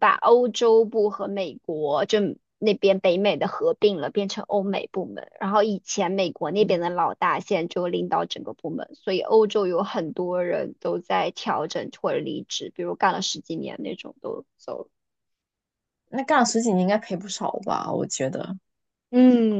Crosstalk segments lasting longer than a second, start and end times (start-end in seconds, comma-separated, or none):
none